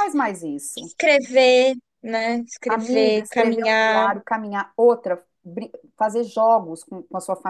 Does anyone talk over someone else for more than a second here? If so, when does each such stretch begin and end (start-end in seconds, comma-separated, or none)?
2.7-4.1